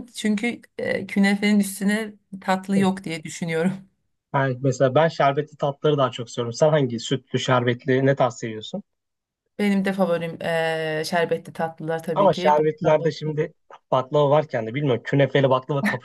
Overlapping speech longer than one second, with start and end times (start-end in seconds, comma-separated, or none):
12.1-13.3